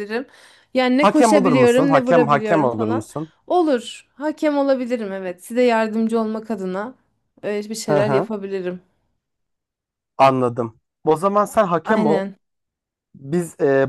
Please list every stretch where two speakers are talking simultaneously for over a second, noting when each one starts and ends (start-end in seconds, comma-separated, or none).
1.0-3.1